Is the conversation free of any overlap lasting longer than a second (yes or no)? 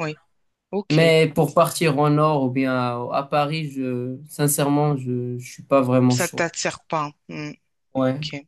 yes